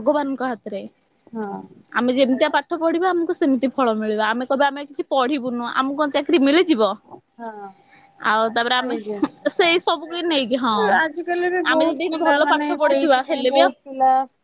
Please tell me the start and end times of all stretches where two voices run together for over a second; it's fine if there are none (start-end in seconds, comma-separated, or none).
none